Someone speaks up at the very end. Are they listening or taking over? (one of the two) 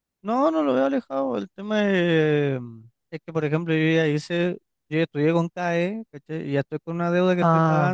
listening